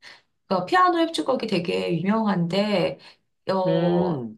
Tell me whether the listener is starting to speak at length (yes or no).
no